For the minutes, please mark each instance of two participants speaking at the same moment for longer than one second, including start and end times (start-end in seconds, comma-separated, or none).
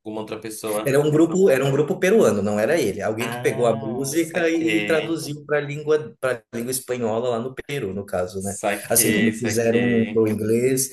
3.2-5.2, 8.4-10.3